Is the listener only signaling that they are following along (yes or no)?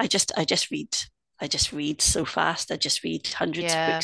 no